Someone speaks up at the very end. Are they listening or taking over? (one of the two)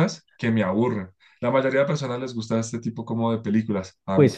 taking over